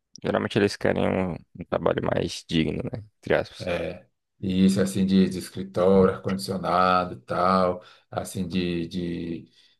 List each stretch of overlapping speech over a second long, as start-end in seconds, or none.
none